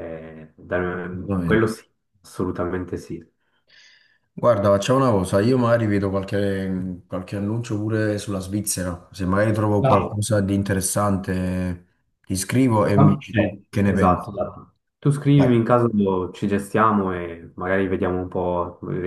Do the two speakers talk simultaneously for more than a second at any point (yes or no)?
yes